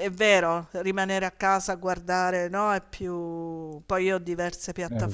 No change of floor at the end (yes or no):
yes